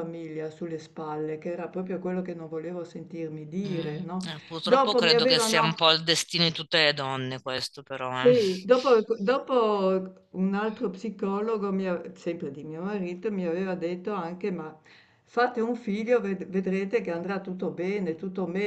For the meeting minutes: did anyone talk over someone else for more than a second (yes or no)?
yes